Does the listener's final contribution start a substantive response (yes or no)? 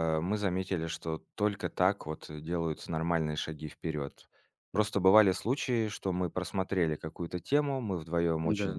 no